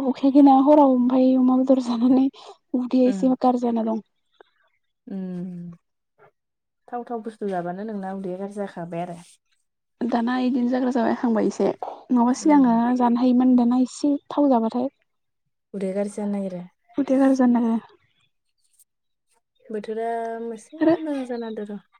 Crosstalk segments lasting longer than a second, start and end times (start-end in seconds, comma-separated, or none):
none